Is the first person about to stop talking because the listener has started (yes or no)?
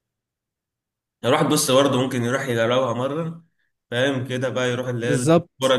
no